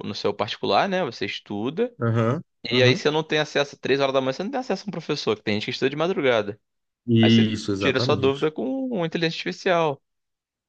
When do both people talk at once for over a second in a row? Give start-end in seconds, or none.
7.2-8.5